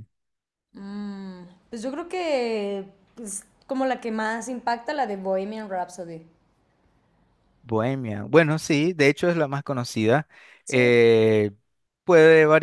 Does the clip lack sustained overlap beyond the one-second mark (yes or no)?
yes